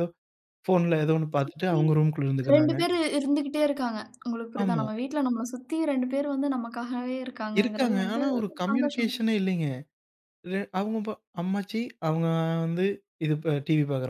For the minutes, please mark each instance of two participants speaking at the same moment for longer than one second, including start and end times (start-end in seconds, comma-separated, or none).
7.6-9.2